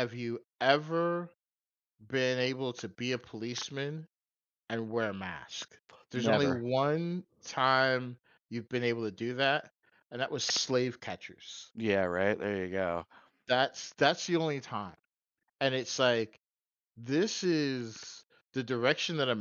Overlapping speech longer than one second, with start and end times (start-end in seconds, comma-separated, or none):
none